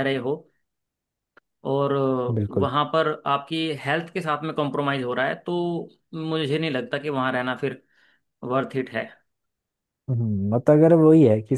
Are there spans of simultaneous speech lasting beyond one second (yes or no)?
no